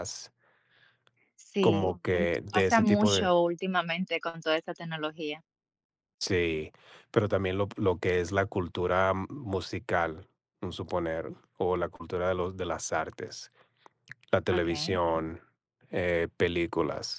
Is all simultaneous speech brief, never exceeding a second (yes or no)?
no